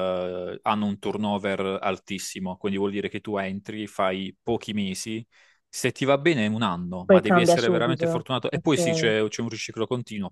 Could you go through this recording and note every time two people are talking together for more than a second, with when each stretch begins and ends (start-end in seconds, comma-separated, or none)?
7.0-8.8